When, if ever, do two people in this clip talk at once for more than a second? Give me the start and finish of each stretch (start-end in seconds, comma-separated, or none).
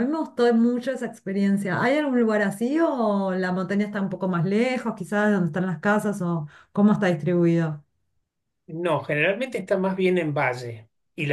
none